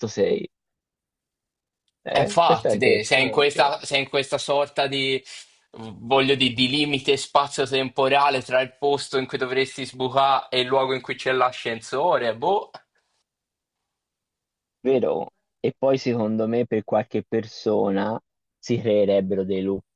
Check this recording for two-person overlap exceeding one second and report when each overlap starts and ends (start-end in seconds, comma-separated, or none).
2.1-3.5